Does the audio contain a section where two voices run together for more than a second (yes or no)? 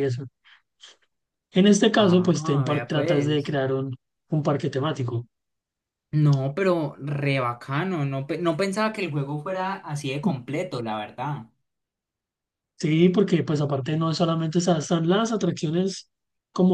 yes